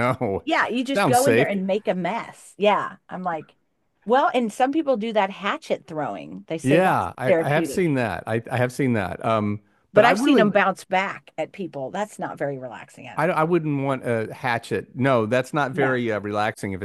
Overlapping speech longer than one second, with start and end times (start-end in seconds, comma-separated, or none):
6.6-8.0